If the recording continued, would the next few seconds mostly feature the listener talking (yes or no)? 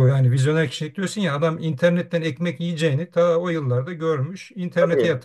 yes